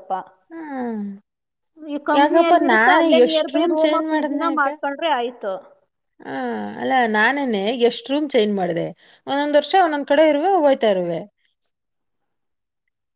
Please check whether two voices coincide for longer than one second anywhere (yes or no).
yes